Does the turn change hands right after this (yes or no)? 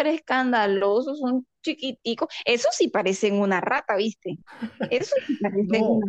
yes